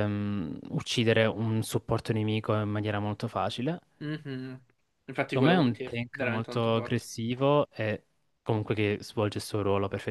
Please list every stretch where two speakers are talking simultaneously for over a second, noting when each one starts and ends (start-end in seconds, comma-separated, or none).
5.2-7.0